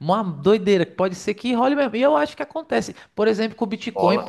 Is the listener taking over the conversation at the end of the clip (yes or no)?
no